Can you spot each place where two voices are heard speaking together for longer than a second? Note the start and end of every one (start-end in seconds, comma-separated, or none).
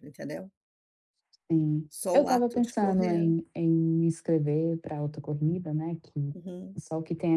1.9-3.3